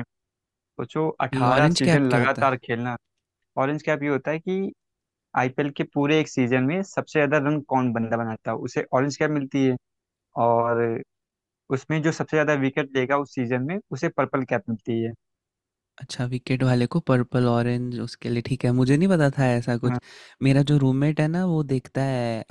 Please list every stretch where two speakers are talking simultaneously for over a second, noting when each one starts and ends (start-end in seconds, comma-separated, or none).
1.3-2.5